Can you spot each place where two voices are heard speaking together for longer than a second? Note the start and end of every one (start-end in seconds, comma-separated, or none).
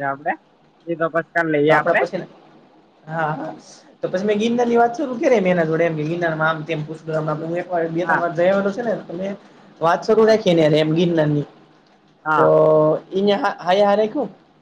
none